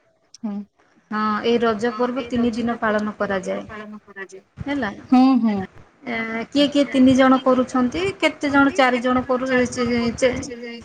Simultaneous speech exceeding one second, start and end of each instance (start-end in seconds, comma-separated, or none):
6.9-9.4